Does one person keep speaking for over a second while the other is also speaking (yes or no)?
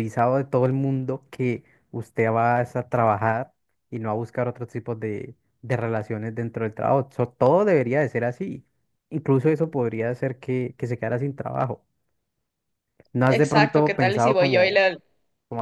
yes